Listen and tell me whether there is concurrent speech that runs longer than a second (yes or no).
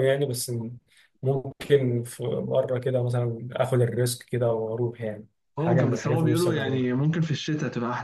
yes